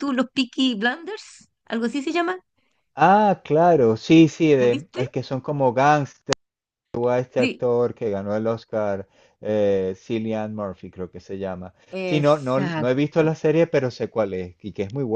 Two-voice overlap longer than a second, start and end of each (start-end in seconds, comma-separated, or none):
11.9-13.3